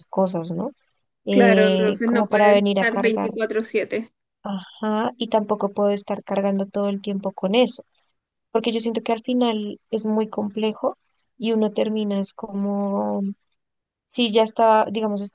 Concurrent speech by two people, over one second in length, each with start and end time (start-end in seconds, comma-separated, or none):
1.3-3.3